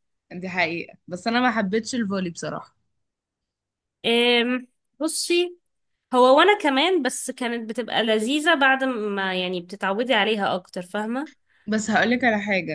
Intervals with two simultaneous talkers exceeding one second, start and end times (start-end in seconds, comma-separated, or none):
none